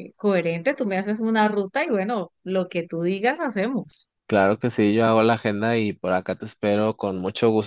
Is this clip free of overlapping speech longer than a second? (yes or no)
yes